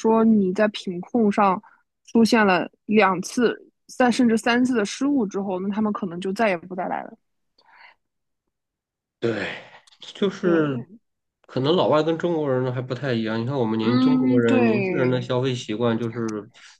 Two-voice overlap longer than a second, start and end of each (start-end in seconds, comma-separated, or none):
13.8-15.3